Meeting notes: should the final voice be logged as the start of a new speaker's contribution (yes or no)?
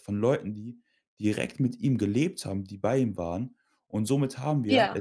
no